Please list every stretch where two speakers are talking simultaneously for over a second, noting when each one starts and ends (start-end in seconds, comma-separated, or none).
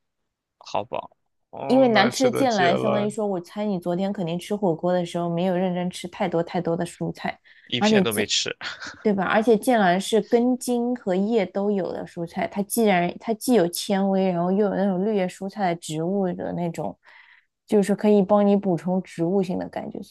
1.7-3.1